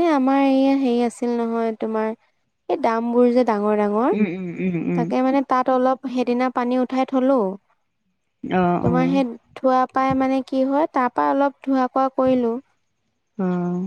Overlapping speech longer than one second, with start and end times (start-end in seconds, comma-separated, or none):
none